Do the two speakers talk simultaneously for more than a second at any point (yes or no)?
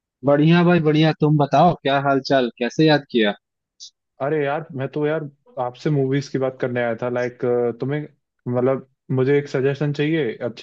no